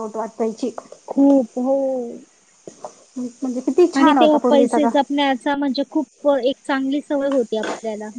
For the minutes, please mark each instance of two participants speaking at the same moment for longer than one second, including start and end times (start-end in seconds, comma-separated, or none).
none